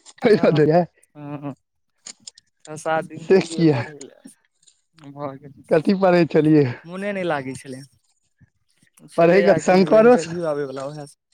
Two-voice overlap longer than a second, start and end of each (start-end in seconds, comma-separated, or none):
9.2-10.4